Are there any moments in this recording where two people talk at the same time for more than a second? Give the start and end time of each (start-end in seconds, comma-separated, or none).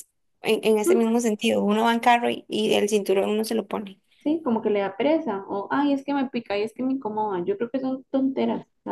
none